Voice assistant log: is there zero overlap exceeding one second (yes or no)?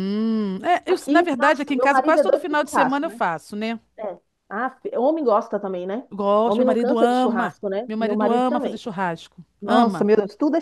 no